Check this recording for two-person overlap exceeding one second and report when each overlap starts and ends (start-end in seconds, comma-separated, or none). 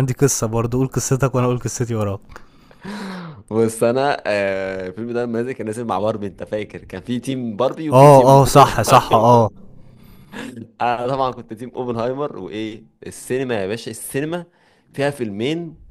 7.9-9.5